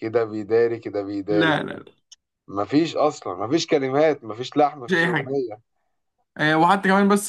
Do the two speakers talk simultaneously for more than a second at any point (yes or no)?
no